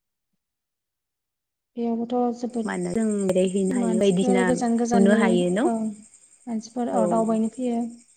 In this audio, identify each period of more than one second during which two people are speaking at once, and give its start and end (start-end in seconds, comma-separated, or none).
3.8-5.2